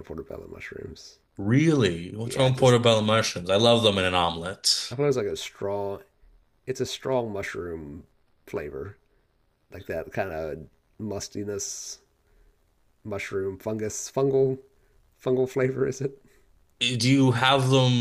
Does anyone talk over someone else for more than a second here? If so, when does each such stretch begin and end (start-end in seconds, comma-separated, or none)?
none